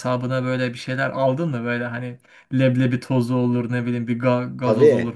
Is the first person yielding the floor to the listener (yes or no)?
yes